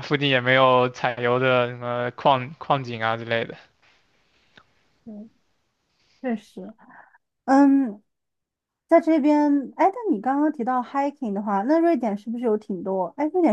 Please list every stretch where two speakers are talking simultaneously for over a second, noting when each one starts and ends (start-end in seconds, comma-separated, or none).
none